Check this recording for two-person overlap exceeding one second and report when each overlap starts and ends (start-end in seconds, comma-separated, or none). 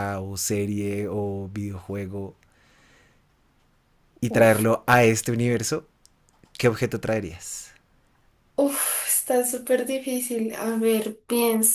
none